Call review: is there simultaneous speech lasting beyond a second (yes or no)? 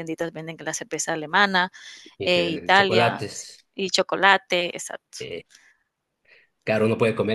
yes